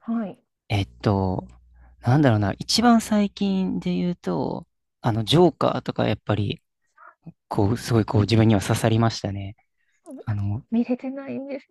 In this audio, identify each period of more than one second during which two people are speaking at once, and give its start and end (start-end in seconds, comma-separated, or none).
none